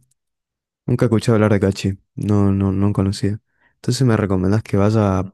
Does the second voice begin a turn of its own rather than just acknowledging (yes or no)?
no